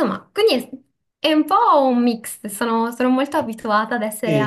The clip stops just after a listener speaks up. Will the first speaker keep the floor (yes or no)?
no